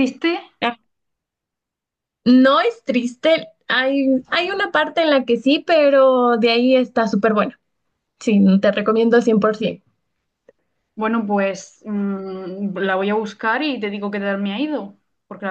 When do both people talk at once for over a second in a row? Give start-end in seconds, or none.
none